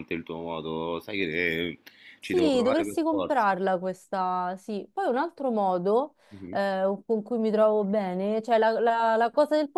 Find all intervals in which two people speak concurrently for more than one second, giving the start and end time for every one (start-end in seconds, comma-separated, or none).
2.2-3.5